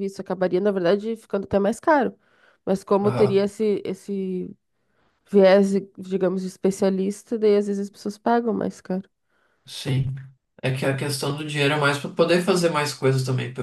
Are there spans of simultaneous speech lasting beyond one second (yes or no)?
no